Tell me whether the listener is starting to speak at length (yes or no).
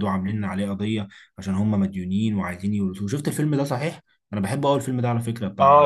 yes